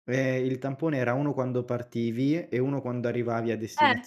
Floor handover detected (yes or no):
yes